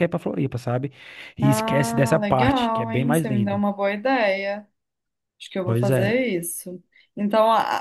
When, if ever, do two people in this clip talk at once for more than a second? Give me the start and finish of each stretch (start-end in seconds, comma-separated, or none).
1.4-3.6